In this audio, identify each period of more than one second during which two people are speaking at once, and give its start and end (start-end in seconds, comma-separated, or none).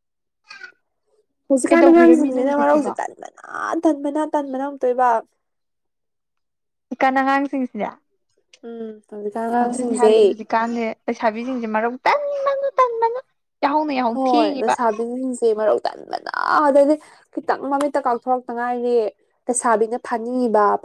1.7-2.9